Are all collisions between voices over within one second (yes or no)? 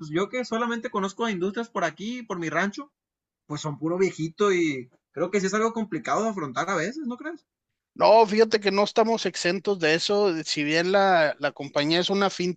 yes